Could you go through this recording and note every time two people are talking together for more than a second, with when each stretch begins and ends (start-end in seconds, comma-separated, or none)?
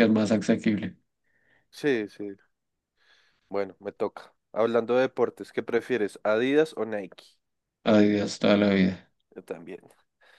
none